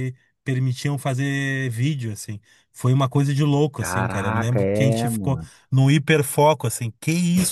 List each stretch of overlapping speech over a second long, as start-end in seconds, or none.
3.8-5.5